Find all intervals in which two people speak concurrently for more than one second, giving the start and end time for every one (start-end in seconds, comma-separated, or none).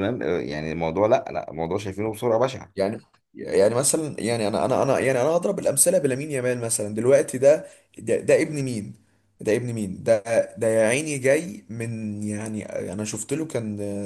none